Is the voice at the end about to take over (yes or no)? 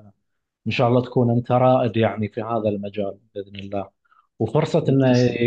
no